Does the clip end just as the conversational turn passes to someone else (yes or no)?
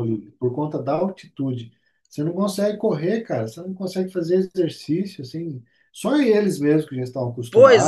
yes